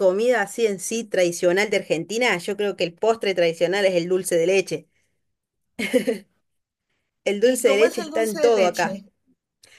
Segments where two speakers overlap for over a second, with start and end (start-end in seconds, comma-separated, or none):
7.4-9.0